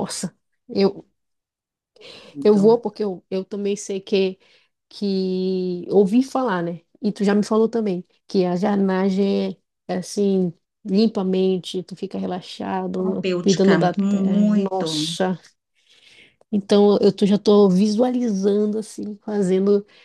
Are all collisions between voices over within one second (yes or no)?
no